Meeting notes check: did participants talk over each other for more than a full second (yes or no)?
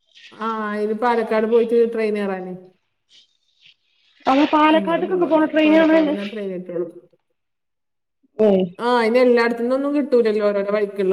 yes